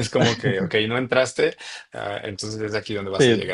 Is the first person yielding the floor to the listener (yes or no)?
yes